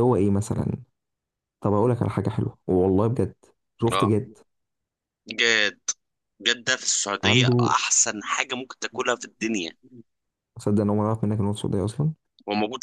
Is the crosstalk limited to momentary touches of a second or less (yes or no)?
yes